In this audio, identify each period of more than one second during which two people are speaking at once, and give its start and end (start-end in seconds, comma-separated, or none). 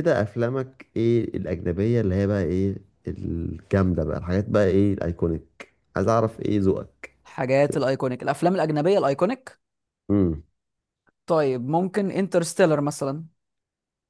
none